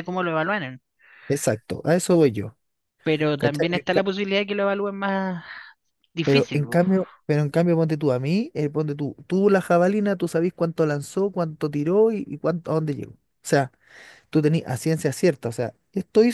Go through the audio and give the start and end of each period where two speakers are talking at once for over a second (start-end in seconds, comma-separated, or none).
none